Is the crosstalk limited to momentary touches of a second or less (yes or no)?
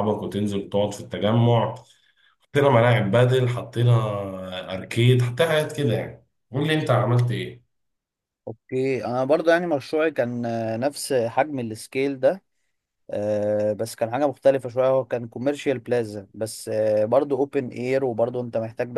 yes